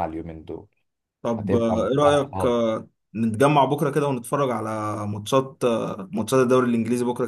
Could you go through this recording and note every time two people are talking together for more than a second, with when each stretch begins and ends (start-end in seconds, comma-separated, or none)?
1.4-2.6